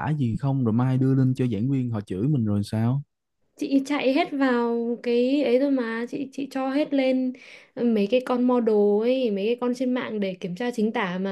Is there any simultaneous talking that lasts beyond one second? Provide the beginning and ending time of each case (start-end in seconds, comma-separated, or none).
none